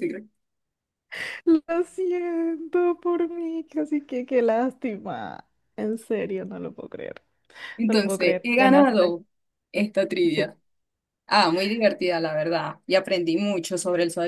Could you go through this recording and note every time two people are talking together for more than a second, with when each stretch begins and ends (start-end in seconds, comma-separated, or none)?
7.9-9.2